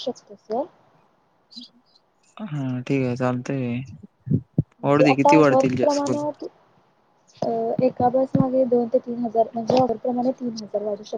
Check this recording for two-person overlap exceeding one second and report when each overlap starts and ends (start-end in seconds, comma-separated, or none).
4.8-6.1